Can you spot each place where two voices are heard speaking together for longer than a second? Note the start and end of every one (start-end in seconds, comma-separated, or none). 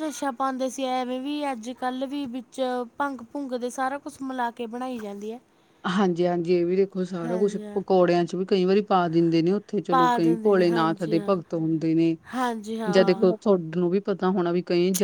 9.9-11.3